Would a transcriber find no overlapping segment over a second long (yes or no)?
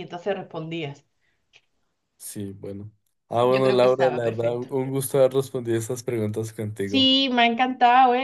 no